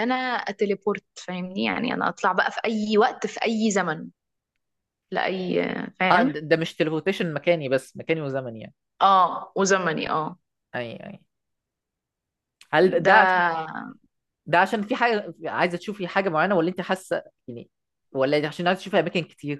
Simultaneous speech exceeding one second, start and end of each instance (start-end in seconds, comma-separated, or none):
none